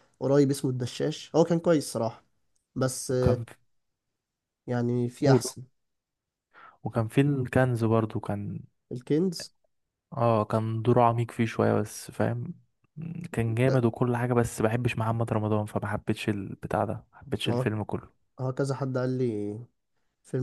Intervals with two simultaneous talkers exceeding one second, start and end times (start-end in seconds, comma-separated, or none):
none